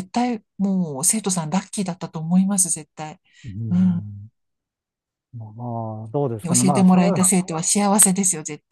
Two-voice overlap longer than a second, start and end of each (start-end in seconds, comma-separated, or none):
none